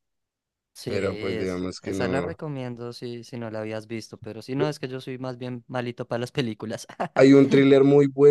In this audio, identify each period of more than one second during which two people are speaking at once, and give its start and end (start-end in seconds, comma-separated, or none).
0.8-2.4